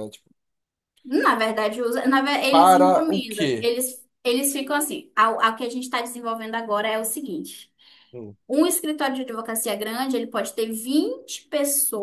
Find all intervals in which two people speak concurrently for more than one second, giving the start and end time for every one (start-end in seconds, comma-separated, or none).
2.5-3.7